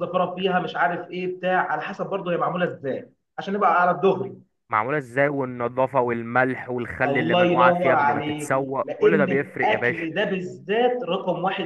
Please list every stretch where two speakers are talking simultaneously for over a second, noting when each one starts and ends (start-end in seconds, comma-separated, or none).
7.1-10.1